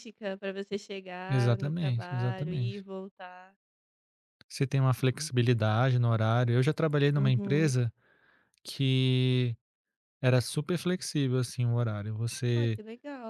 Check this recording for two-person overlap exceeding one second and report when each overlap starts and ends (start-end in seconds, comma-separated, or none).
1.3-2.9